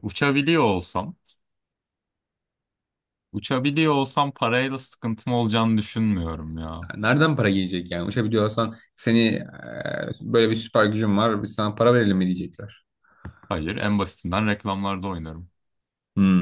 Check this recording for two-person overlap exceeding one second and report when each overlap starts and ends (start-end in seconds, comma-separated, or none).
none